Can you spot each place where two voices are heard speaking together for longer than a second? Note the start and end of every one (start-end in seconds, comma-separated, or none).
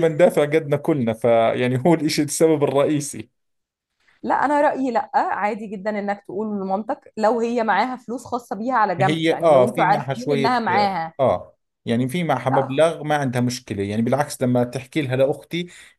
9.0-10.6